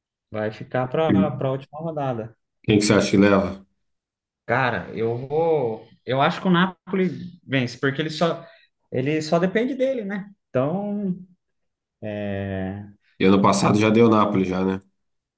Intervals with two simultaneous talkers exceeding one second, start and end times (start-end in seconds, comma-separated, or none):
none